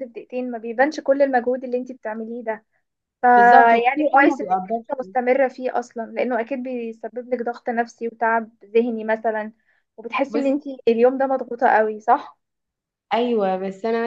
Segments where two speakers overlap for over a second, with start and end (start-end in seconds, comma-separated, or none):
3.4-4.8